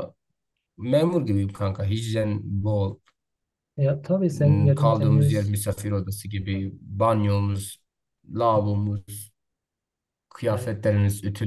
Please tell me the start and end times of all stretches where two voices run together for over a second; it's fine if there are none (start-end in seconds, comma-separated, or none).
4.3-5.5